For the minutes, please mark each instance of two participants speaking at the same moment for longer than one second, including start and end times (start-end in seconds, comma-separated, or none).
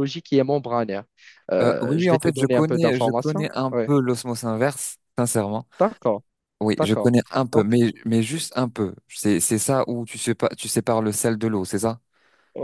1.6-3.8